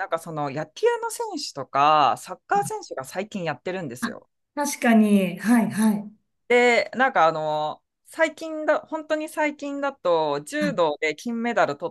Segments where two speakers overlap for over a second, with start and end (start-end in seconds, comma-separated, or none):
none